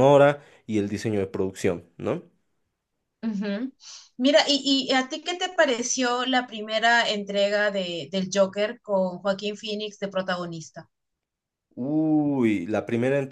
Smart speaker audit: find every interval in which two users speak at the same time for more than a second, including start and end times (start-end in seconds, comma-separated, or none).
none